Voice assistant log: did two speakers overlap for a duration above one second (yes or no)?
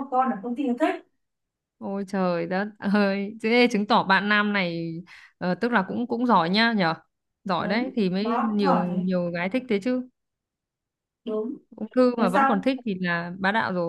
yes